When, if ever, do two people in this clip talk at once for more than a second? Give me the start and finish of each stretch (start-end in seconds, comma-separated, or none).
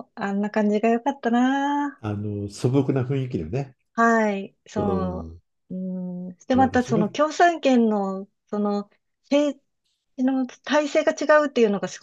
none